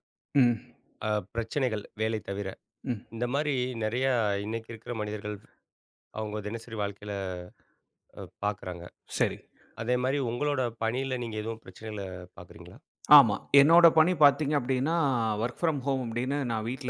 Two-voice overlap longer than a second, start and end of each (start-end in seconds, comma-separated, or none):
none